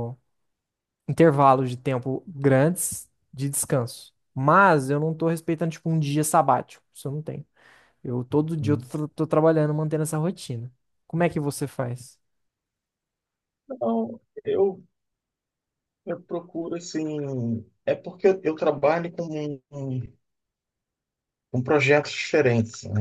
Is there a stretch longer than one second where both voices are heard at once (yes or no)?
no